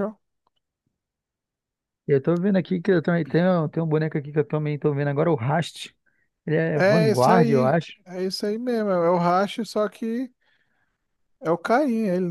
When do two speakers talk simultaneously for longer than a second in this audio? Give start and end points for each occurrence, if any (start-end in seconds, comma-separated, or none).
6.7-7.9